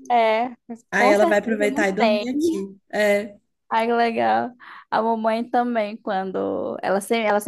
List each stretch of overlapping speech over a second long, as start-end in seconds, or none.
0.9-2.2